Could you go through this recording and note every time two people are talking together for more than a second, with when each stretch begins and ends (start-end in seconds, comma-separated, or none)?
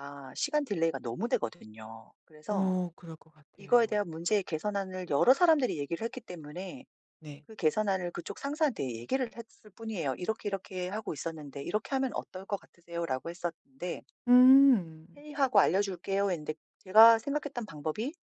none